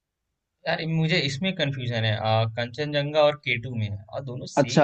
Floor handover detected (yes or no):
yes